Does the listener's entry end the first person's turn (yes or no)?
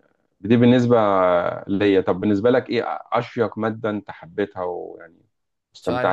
yes